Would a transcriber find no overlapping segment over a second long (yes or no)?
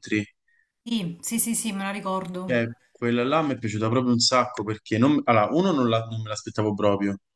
yes